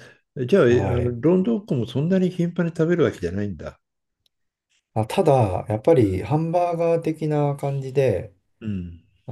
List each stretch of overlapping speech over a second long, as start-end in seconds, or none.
none